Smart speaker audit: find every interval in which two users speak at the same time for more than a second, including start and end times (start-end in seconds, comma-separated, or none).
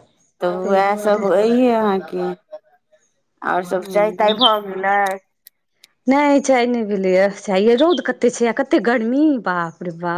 none